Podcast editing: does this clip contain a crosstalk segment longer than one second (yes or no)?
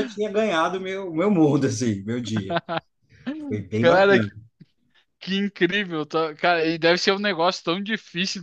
no